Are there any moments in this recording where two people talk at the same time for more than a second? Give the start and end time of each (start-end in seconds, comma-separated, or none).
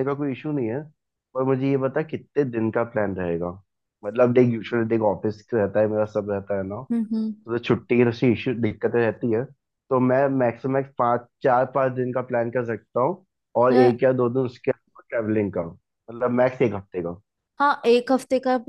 none